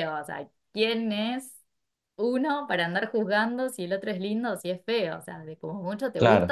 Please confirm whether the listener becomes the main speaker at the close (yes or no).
no